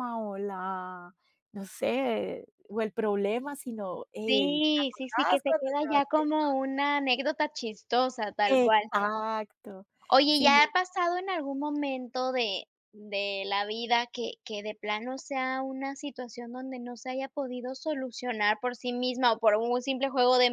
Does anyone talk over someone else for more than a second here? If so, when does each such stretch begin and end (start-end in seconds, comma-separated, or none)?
4.2-6.3